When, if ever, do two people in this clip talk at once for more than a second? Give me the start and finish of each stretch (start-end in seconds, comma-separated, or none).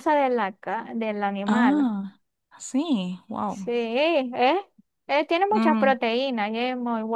none